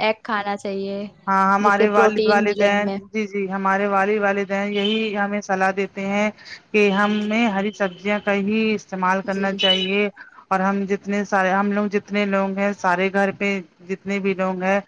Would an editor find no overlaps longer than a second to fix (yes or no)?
no